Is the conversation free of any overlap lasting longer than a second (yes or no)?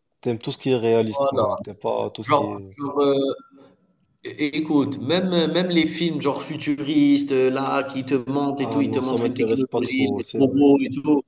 no